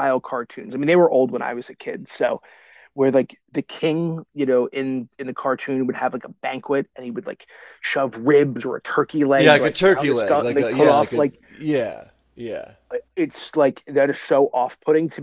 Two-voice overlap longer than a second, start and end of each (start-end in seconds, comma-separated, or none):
9.3-11.4